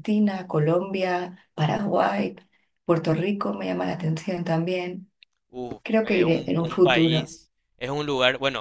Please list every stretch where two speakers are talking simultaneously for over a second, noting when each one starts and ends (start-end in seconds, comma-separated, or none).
5.8-7.3